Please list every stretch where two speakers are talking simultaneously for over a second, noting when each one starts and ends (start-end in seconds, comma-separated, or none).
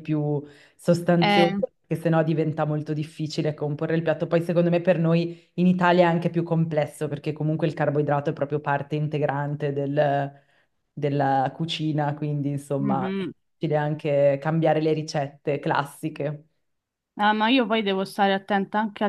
none